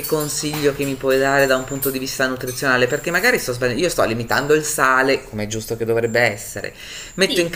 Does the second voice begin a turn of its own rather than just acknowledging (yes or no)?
yes